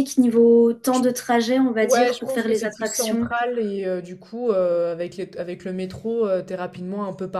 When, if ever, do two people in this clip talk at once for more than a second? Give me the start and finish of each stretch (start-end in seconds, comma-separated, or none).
1.8-3.3